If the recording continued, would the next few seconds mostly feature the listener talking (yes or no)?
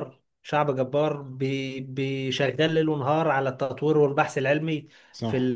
no